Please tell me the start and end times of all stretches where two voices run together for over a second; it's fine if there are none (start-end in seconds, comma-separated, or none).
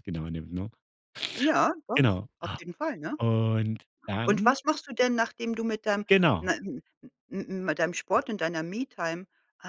none